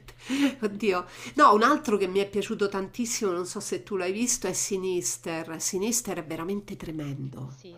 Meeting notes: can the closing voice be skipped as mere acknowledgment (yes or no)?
no